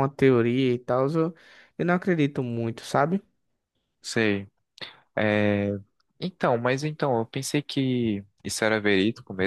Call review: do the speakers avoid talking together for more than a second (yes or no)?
yes